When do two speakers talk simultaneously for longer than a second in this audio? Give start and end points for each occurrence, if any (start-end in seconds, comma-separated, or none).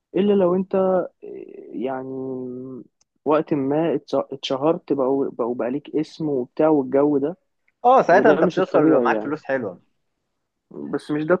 8.1-9.3